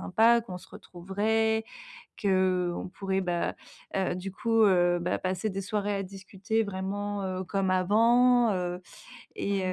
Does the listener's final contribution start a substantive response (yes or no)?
no